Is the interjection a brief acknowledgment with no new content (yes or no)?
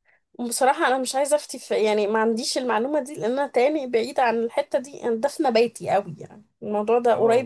yes